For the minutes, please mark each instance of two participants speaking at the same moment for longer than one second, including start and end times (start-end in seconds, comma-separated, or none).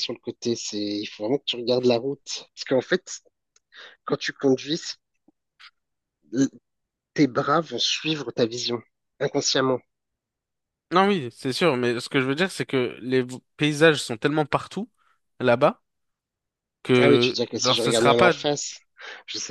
17.0-18.3